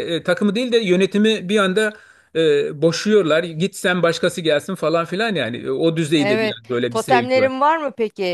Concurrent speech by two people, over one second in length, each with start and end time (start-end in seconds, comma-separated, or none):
6.2-7.5